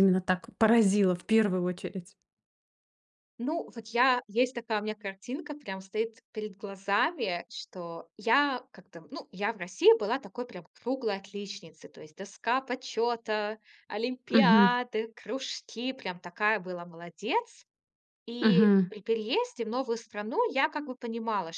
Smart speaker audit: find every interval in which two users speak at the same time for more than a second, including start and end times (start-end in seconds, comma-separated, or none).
none